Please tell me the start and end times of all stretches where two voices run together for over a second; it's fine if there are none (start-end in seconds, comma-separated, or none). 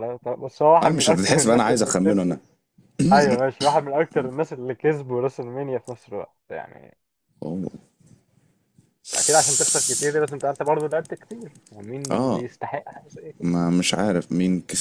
0.8-2.4